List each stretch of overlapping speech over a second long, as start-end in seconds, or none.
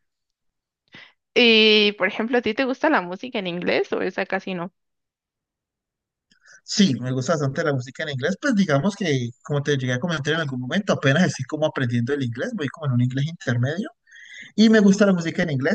none